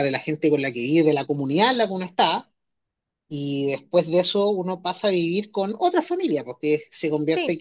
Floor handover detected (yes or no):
no